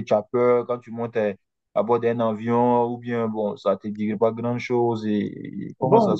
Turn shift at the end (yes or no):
yes